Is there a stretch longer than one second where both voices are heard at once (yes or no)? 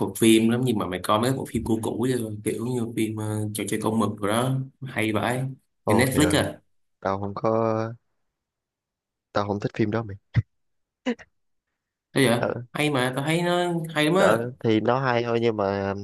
no